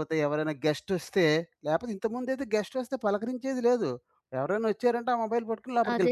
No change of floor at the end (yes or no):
no